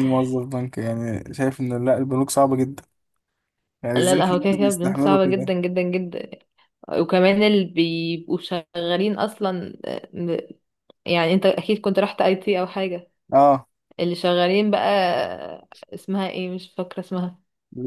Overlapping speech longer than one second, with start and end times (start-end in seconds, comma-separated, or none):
3.9-5.5